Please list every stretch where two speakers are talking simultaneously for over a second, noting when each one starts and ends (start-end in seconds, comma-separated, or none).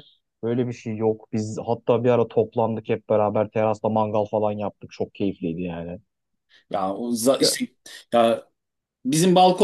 none